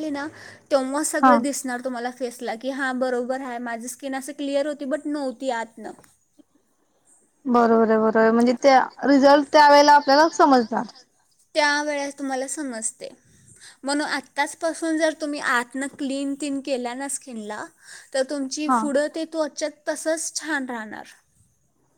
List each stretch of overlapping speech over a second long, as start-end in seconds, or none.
none